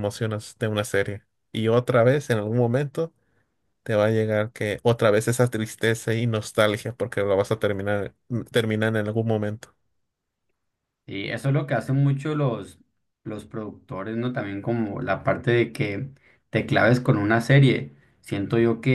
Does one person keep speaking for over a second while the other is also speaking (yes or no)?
no